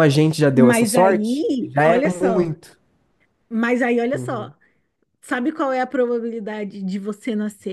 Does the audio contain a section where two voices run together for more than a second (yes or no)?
yes